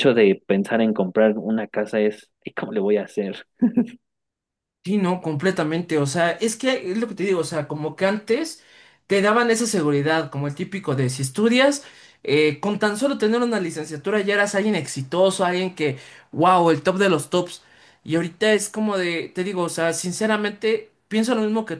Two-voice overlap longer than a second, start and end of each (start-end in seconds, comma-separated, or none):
none